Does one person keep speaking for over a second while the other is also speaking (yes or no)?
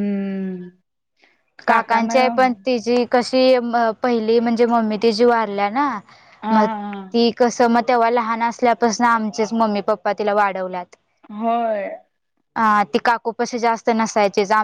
no